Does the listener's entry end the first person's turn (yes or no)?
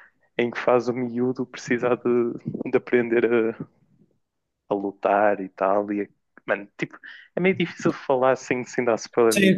yes